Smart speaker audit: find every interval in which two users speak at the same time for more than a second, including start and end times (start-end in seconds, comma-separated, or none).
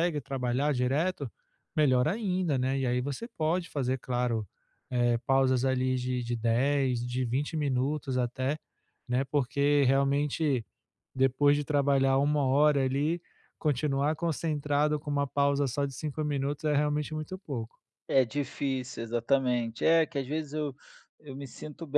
none